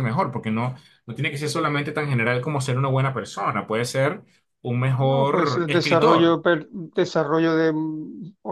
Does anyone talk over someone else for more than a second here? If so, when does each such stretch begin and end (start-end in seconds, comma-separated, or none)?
5.0-6.4